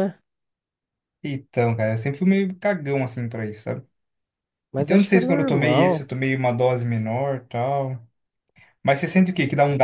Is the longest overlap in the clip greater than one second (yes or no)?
yes